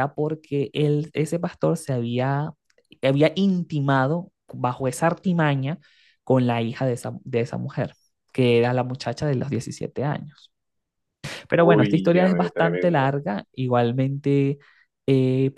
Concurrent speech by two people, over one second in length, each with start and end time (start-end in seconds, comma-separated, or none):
11.5-13.1